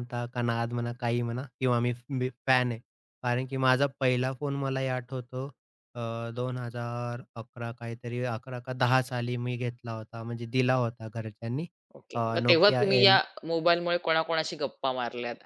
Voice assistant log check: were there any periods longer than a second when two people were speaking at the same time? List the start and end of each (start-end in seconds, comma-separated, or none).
none